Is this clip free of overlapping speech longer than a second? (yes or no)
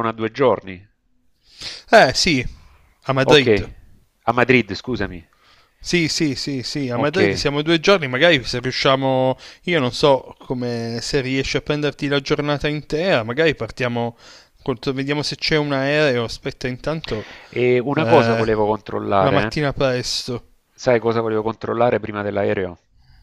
yes